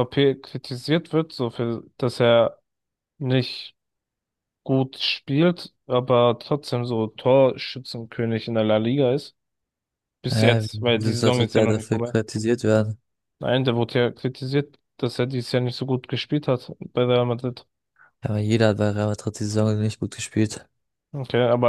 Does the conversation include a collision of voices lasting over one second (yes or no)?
yes